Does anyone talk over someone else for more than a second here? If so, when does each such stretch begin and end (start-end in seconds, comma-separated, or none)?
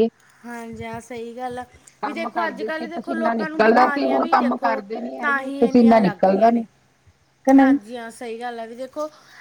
2.0-4.6